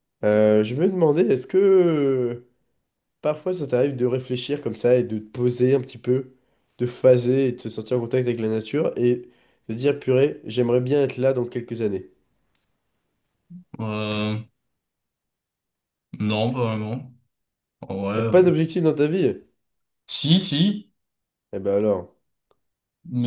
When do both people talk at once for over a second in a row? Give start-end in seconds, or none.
none